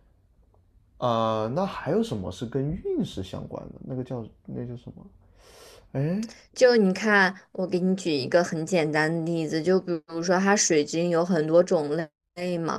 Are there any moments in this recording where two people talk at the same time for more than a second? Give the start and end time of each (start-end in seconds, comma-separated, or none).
none